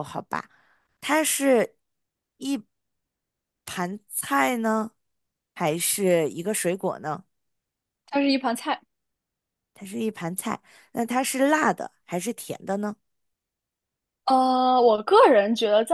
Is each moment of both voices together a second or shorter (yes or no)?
yes